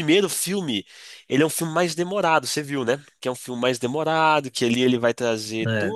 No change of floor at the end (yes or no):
yes